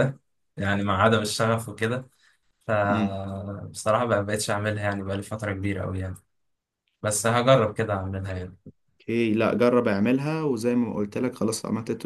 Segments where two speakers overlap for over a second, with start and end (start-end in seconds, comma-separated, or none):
none